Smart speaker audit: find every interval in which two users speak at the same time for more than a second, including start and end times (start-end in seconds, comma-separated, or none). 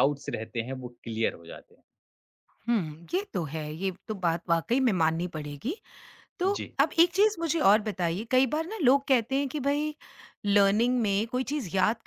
none